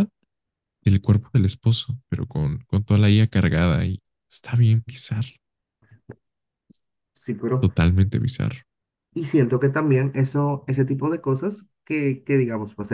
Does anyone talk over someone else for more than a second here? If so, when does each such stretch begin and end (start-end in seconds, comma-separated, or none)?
none